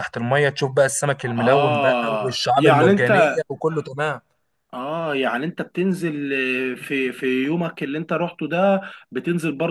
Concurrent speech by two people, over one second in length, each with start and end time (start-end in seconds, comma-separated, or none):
1.4-3.1